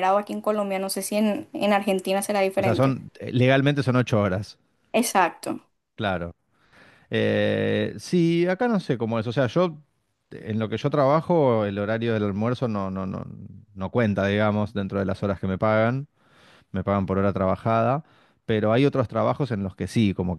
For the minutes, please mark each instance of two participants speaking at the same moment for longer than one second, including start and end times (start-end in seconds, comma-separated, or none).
none